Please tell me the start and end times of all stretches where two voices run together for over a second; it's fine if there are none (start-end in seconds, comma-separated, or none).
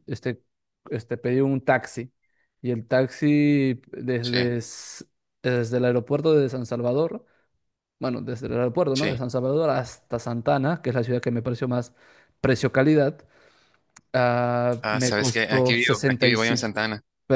14.8-16.6